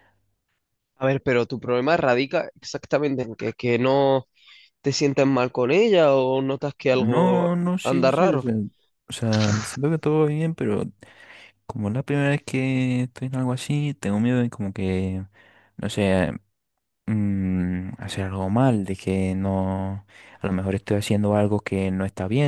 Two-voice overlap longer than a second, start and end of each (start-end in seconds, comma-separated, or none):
6.9-8.4